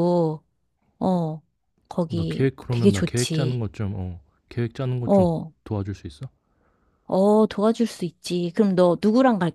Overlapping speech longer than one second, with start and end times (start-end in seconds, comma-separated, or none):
2.1-3.6